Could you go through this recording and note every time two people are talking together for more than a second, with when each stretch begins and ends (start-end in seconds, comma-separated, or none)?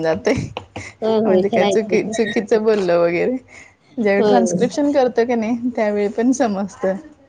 1.2-3.0